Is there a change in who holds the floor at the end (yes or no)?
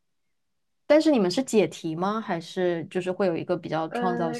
yes